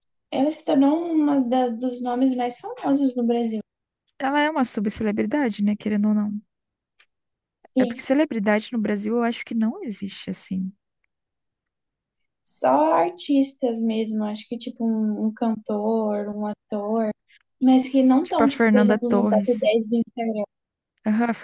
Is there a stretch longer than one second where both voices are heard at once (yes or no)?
yes